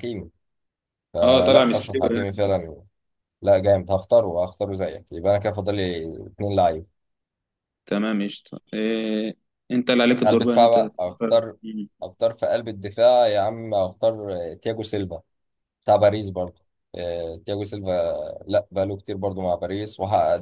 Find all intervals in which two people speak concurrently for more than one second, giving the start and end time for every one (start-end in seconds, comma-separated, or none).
1.2-2.4, 10.2-11.6